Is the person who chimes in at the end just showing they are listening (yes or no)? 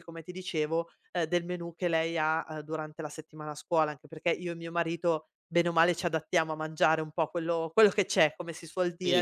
no